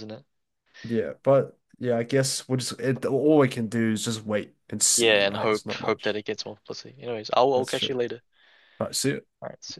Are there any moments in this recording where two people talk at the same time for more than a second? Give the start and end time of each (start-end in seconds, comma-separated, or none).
5.0-6.2